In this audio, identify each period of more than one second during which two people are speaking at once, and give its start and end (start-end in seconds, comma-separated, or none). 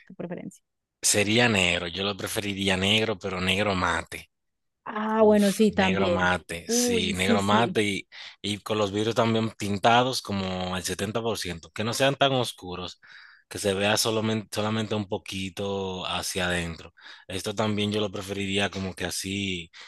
5.2-7.8